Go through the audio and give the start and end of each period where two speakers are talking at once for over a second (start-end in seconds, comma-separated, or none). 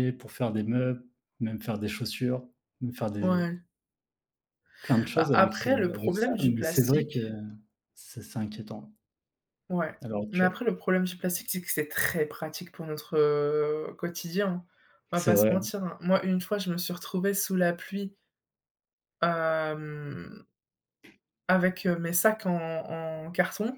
5.2-7.2